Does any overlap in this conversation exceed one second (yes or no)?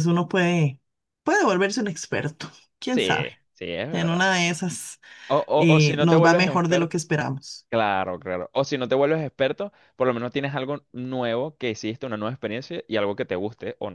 yes